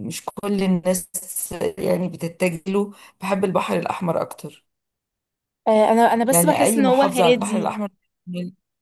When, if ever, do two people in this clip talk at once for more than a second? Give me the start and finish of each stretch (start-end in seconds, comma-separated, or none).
6.3-7.7